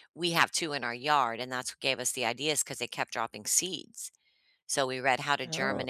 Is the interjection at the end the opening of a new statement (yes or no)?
no